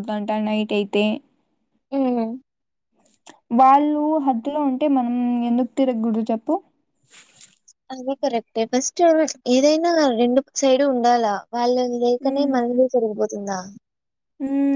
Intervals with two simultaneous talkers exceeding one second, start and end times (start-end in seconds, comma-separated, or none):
none